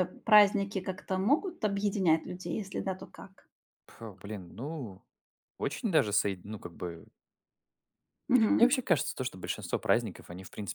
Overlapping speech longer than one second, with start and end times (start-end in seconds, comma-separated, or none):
none